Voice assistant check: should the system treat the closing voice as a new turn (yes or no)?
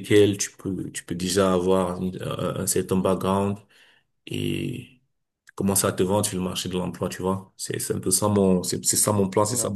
yes